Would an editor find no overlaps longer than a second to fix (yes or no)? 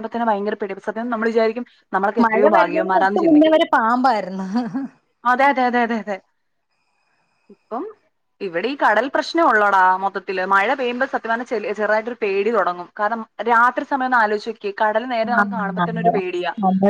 yes